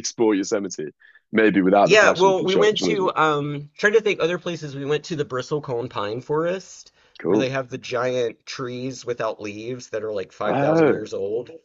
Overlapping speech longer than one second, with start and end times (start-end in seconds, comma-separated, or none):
1.8-3.1